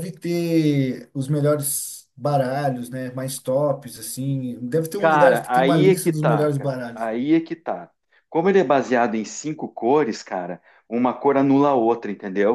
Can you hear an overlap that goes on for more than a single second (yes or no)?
yes